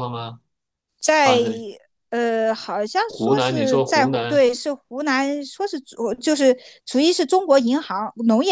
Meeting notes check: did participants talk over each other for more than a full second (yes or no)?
yes